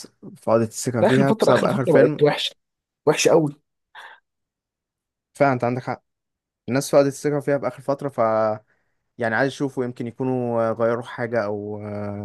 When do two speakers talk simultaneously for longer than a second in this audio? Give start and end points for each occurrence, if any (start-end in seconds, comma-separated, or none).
1.0-2.3